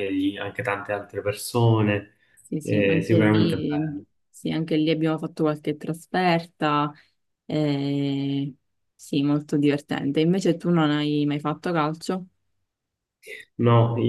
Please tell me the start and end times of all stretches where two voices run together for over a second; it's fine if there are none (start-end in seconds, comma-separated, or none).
2.6-4.0